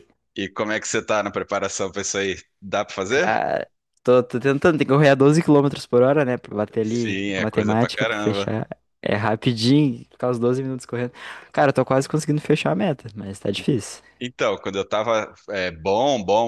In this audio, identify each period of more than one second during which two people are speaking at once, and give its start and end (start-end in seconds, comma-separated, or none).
6.8-8.5